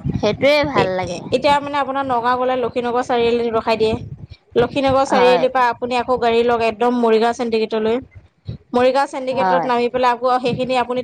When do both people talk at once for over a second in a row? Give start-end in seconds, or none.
none